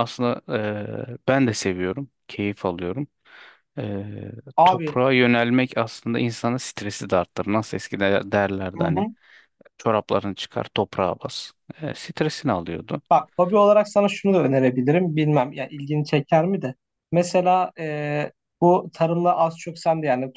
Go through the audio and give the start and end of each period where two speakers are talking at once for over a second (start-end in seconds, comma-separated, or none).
none